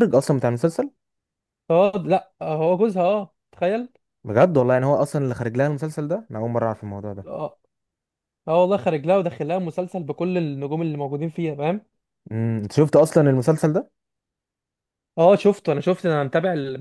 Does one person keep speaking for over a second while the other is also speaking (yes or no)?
no